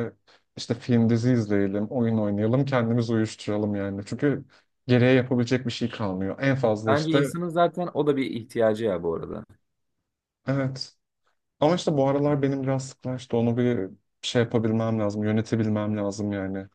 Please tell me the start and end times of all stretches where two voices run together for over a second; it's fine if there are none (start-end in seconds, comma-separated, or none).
none